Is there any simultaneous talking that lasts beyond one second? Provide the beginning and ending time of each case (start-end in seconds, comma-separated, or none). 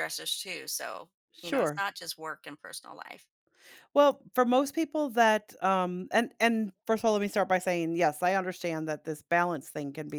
none